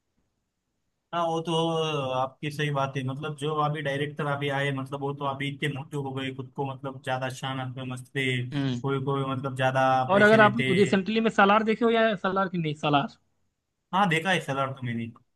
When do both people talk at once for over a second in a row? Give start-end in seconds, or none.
none